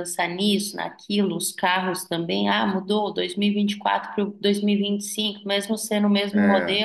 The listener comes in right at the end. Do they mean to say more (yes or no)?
no